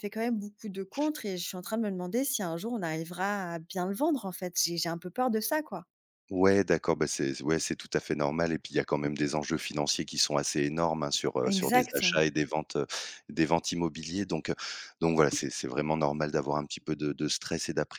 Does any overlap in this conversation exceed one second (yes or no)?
no